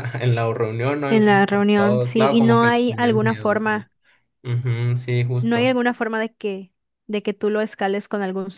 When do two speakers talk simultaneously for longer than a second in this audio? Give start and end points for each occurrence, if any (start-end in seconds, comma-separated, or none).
1.1-3.9